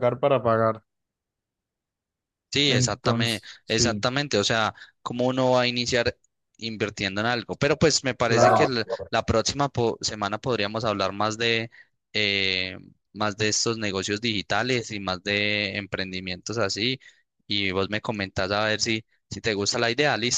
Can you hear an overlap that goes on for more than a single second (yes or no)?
yes